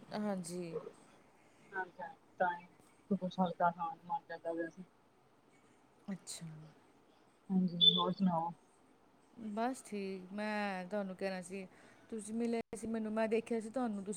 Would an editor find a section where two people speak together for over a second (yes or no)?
no